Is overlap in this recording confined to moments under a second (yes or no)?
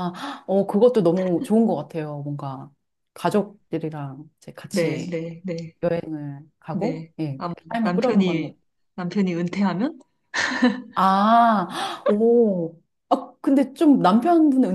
no